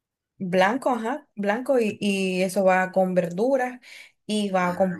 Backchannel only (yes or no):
yes